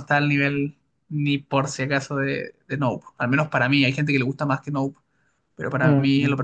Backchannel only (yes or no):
no